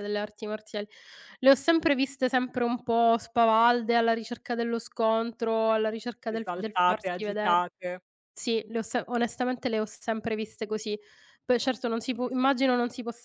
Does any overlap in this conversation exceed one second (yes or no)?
yes